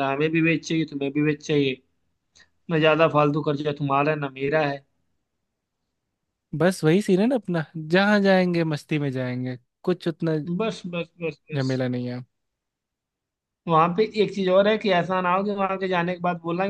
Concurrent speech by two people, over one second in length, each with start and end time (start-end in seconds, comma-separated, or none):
none